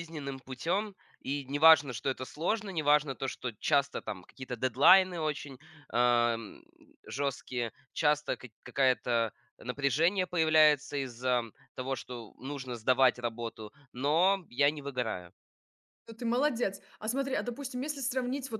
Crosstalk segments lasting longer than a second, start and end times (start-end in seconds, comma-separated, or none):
none